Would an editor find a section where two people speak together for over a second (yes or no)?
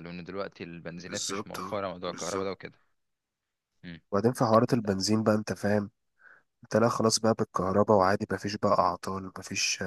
yes